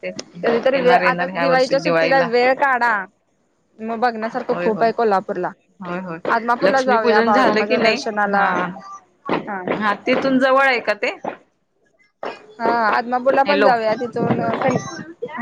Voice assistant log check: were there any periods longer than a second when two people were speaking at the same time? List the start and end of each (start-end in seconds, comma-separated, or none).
0.7-2.3, 6.4-8.0